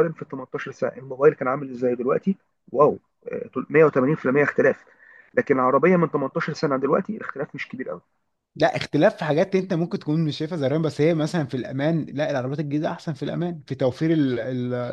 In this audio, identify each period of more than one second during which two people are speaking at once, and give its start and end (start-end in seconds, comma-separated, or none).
none